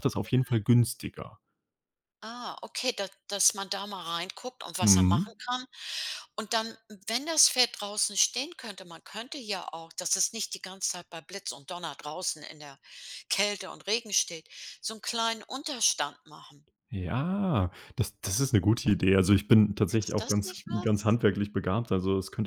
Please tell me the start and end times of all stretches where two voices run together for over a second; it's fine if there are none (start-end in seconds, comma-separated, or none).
19.9-21.2